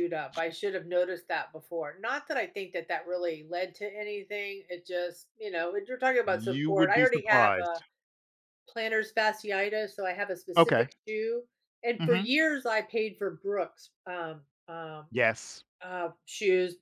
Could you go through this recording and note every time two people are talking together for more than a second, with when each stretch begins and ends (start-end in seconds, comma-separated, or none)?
6.3-7.8